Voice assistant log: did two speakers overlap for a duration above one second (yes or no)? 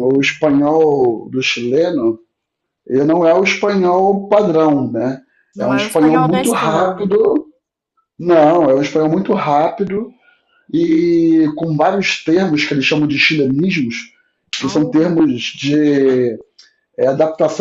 yes